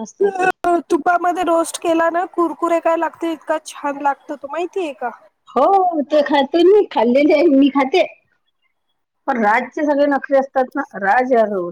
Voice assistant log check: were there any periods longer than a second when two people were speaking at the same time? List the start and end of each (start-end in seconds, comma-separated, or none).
none